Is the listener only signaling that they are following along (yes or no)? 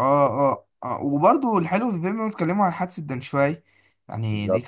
yes